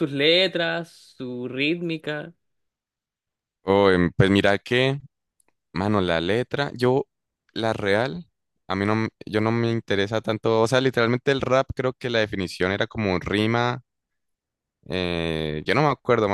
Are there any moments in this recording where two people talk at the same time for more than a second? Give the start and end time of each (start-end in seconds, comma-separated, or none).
none